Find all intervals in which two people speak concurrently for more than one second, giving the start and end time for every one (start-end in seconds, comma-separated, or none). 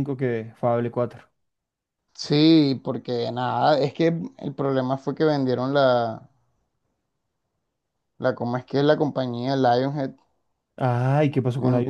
none